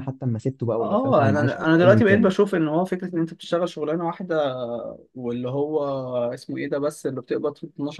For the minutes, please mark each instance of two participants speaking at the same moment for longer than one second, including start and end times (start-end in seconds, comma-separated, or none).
0.8-2.3